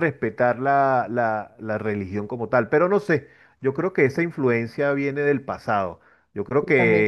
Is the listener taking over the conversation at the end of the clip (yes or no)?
no